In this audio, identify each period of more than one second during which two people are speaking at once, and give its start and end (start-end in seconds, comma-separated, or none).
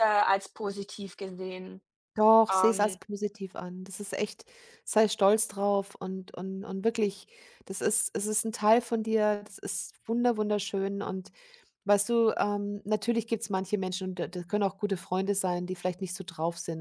none